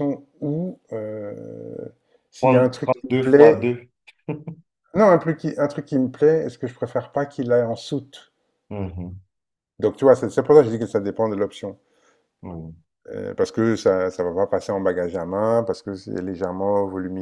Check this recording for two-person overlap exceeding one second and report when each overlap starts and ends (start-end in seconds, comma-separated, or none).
2.4-3.7